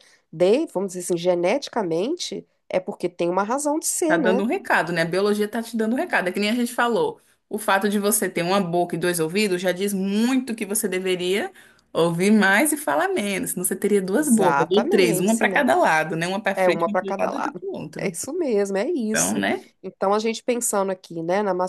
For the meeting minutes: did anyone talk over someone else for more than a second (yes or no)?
yes